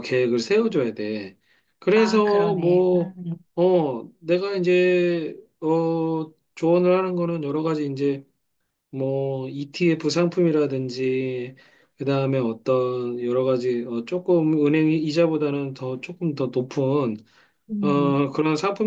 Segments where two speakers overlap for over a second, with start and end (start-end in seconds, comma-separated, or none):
1.9-3.1